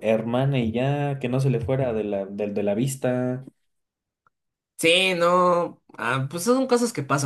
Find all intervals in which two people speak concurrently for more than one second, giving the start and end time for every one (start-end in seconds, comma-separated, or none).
none